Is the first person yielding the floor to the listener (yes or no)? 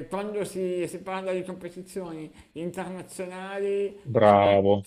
no